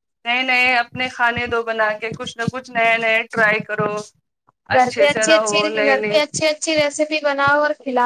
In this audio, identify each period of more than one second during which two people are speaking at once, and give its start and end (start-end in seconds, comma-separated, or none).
4.8-6.2